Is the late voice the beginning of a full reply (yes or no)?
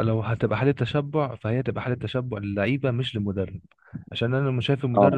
no